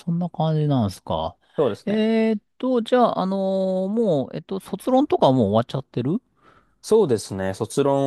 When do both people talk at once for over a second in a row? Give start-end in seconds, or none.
none